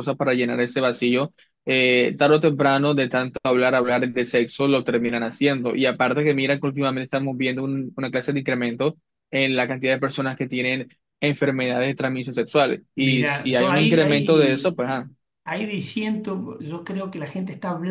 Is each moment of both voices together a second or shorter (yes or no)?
no